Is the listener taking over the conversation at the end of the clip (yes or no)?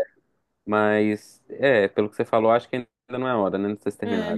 yes